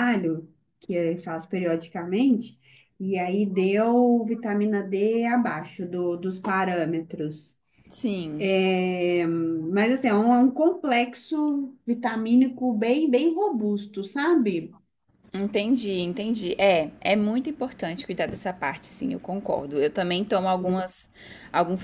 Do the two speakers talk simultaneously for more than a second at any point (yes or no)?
no